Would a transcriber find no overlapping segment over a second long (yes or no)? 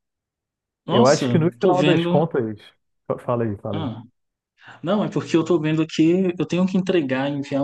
no